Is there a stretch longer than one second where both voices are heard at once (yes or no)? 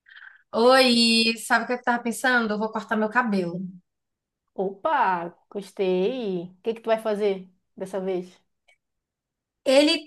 no